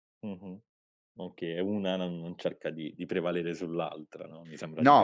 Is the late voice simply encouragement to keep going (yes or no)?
no